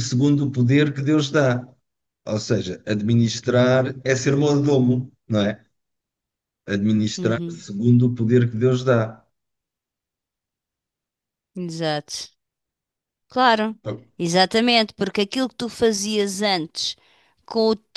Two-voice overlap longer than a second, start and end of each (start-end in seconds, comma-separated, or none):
none